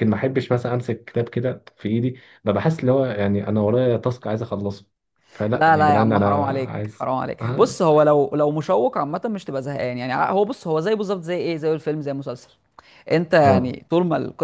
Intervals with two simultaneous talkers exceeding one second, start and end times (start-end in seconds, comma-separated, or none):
5.5-7.8